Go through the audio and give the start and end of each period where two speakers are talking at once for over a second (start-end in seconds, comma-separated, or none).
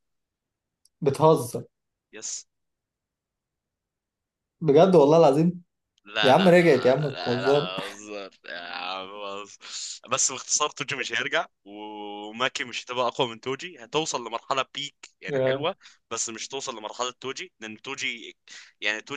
6.2-7.7